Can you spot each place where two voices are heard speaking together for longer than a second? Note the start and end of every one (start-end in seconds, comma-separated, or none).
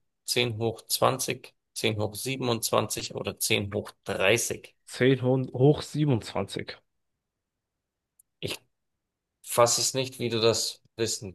none